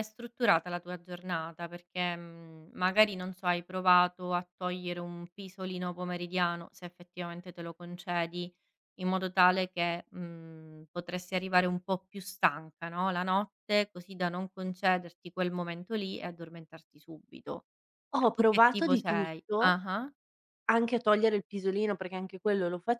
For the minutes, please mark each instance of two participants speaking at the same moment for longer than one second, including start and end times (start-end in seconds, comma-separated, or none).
18.3-19.8